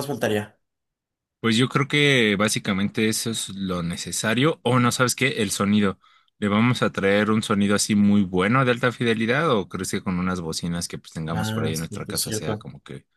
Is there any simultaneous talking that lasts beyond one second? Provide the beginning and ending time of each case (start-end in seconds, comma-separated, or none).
11.3-12.7